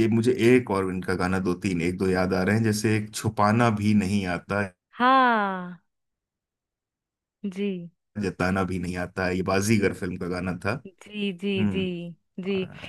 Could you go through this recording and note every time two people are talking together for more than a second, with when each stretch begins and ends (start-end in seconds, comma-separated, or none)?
none